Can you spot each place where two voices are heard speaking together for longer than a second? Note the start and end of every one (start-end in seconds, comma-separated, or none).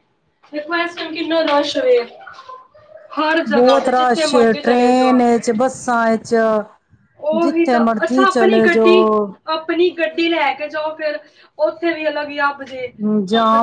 3.5-5.2, 7.4-9.1